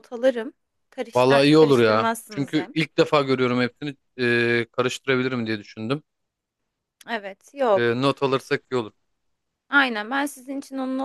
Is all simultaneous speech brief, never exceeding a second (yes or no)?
no